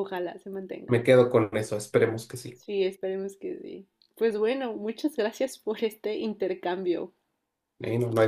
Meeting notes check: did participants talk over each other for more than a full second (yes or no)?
no